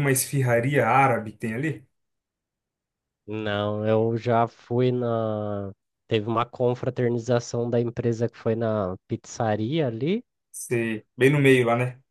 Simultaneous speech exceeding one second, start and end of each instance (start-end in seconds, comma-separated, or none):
none